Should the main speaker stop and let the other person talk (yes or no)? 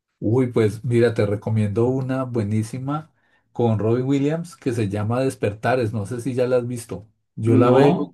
no